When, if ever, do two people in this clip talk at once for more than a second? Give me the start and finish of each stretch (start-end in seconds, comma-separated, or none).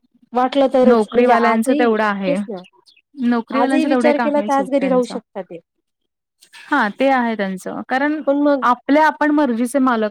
0.9-2.4, 3.6-5.1